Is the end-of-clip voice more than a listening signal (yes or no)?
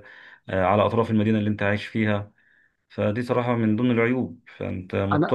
no